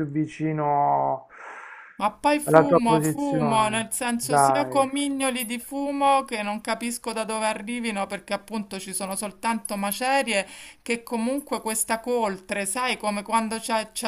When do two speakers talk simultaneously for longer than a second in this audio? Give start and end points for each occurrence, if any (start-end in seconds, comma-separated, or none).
2.4-4.8